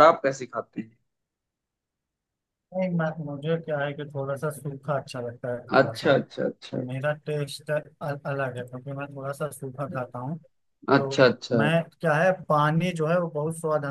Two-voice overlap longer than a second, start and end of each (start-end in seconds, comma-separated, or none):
none